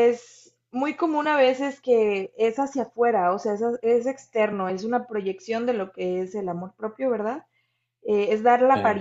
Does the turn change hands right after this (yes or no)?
no